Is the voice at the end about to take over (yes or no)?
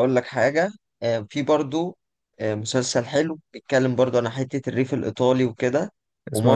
no